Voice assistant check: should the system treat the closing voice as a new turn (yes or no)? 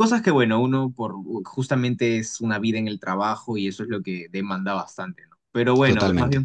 no